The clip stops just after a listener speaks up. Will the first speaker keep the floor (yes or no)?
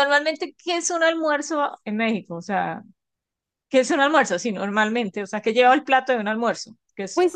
no